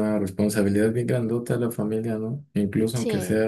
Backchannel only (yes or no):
yes